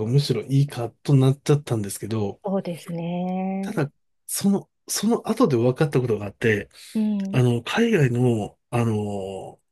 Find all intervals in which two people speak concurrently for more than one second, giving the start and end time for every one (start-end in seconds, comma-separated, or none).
none